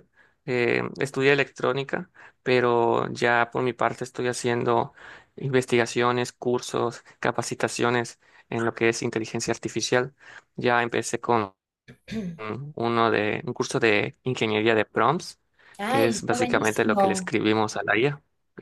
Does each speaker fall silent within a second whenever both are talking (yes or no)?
no